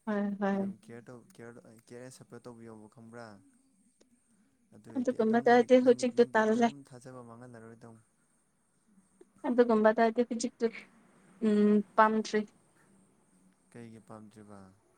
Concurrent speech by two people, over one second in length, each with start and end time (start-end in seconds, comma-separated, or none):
5.0-6.7